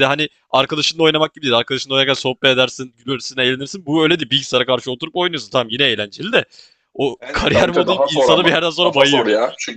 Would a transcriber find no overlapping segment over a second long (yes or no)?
no